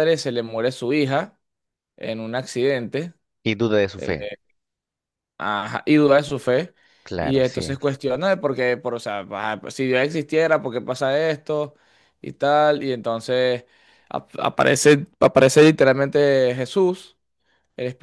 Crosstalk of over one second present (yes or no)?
no